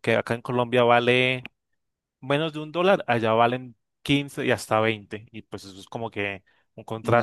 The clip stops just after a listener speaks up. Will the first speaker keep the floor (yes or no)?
no